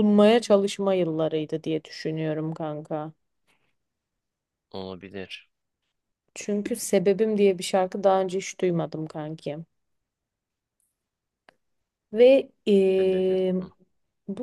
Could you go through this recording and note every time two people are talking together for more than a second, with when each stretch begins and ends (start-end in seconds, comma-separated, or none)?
none